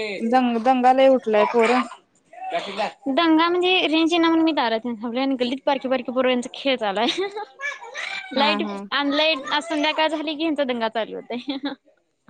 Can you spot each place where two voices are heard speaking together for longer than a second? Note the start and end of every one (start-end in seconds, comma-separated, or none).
none